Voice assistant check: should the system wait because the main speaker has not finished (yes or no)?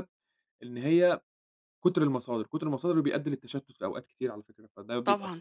no